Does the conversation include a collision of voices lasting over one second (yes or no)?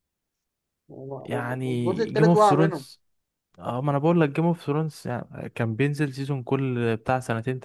yes